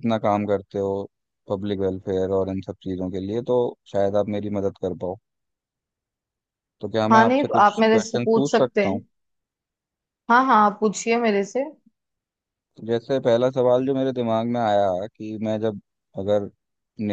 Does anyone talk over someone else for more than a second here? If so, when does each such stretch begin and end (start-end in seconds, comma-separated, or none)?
7.1-9.0